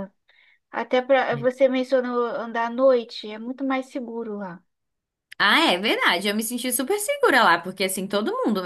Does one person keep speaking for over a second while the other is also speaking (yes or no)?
no